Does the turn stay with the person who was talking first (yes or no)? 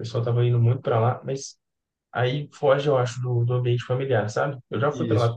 yes